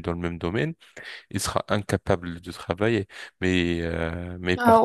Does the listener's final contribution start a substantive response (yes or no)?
yes